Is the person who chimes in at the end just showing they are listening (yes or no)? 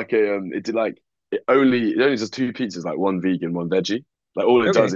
yes